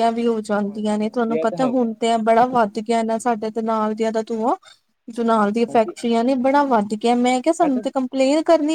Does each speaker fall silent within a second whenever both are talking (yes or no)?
no